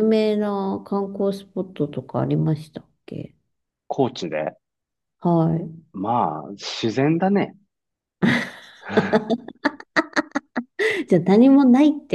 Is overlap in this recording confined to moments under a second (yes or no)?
yes